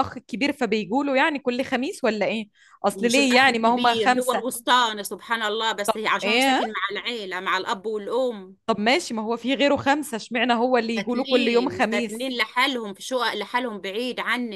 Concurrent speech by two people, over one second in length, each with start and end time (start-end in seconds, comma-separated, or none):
2.9-4.5, 10.9-12.3